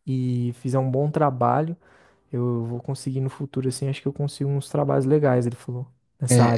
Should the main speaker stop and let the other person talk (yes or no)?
yes